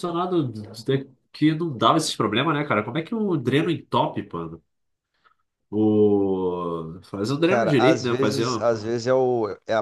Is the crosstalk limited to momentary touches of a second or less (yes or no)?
no